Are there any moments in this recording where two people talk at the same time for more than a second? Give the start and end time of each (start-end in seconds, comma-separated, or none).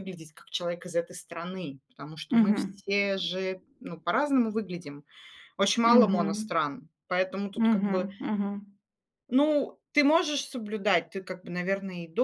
none